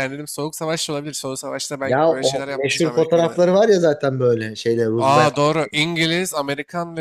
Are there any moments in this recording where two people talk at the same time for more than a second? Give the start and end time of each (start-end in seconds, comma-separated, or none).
1.8-3.2